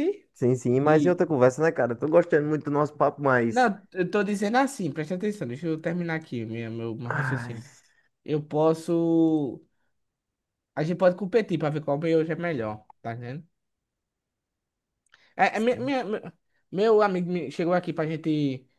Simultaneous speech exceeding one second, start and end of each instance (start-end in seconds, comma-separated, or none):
none